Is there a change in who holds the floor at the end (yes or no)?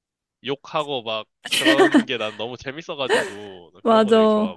yes